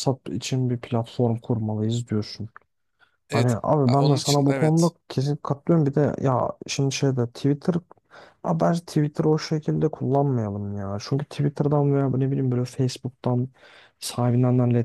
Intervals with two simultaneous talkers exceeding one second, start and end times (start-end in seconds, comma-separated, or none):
3.3-4.9